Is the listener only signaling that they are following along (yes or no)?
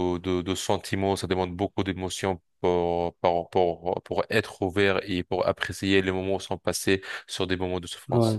no